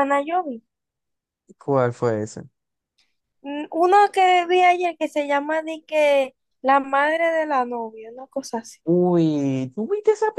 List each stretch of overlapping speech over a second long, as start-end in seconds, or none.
none